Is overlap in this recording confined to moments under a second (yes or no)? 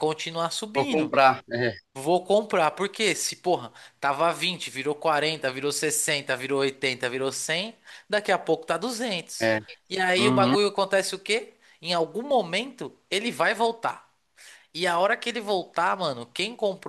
yes